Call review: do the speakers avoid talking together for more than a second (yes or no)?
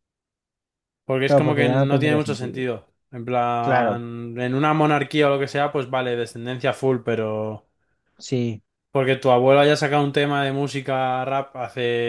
no